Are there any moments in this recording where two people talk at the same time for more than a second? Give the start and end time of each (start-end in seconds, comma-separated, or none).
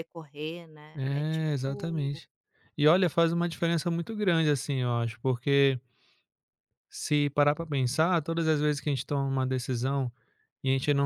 0.9-2.2